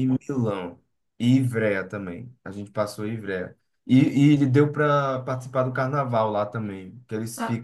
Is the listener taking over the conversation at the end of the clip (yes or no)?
no